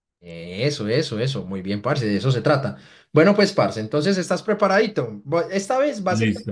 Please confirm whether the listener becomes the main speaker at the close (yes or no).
no